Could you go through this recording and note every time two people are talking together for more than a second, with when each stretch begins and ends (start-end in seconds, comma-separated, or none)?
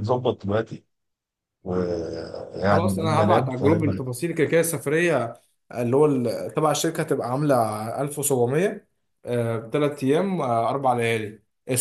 2.6-4.0